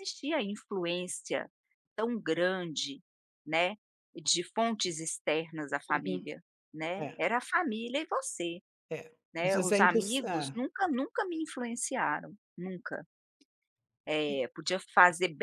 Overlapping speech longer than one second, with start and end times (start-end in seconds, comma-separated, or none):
9.3-10.6